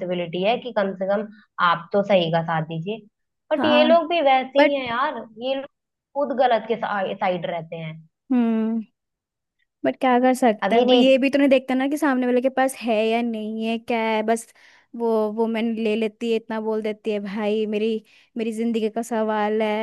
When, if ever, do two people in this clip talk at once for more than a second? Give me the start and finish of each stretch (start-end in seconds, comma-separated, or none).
none